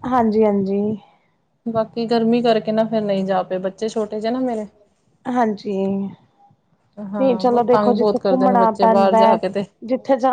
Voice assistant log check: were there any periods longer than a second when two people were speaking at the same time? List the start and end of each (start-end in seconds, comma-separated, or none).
7.2-9.2